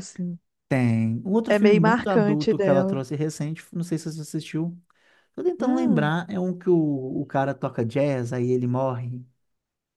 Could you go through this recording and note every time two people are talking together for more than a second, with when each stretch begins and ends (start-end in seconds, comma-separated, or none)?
1.5-3.0